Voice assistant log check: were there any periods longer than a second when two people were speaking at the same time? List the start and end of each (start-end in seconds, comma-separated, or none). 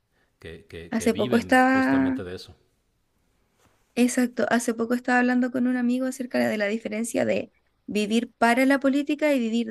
0.9-2.2